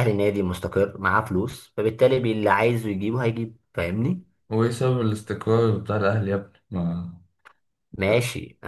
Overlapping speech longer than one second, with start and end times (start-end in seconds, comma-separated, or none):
none